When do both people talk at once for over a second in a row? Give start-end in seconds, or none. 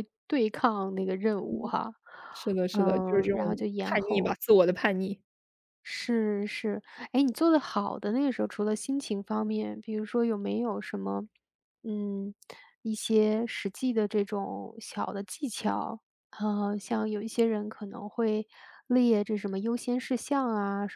2.7-4.4